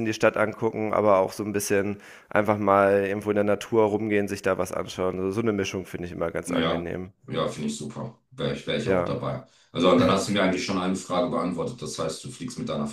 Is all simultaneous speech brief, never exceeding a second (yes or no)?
yes